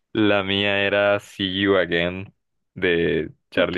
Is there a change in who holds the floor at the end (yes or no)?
no